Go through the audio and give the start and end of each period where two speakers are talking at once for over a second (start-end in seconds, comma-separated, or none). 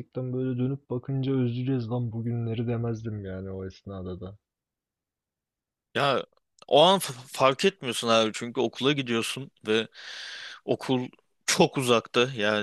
none